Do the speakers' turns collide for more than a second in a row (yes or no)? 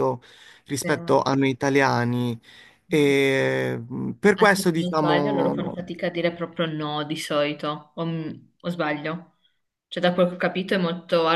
yes